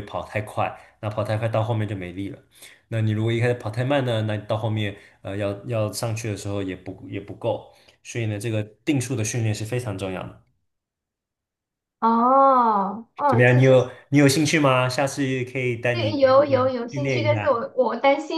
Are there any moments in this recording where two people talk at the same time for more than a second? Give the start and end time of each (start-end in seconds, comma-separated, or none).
15.9-17.5